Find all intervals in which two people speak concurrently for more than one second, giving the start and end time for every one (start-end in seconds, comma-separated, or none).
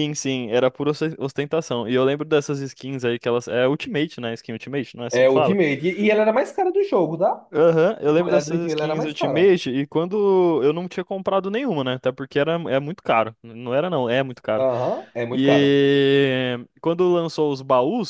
8.1-9.5